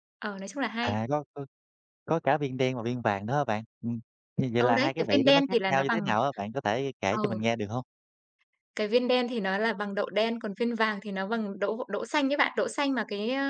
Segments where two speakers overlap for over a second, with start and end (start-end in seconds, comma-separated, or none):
4.6-6.0